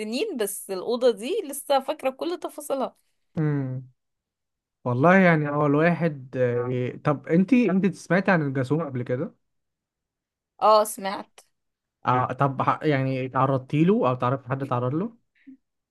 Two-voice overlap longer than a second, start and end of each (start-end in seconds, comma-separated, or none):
none